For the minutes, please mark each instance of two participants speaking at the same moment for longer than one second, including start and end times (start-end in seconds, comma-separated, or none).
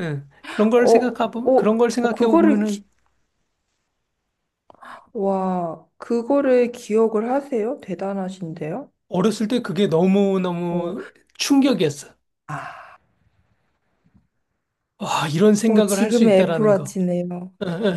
0.8-2.8, 15.7-17.0